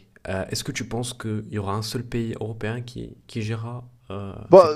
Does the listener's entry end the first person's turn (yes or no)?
yes